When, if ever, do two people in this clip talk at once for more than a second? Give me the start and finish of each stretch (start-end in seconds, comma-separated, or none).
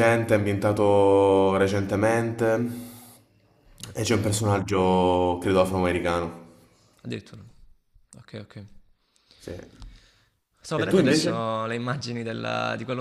none